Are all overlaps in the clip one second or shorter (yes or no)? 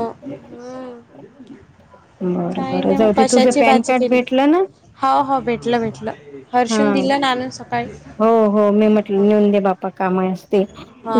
no